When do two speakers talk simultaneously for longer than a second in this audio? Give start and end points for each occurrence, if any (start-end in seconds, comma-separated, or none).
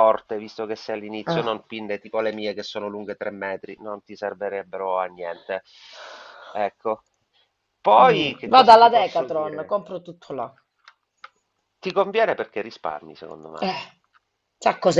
8.0-9.8